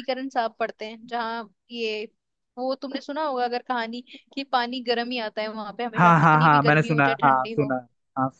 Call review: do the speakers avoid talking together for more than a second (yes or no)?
no